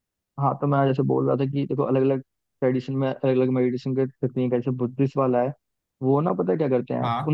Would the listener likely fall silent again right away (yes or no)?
yes